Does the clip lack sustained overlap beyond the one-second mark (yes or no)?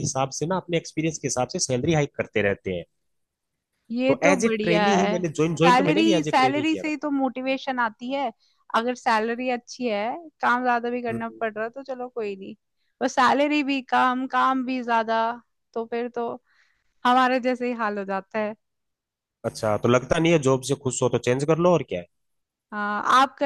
no